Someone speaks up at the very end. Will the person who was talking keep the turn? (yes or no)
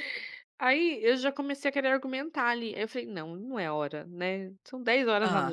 yes